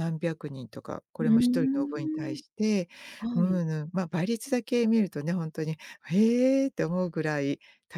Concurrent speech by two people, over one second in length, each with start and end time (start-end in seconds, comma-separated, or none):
1.2-2.4